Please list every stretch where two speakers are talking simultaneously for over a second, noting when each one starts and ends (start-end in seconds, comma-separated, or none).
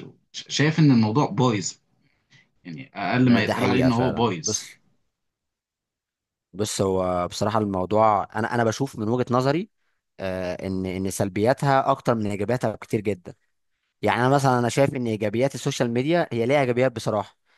3.2-4.6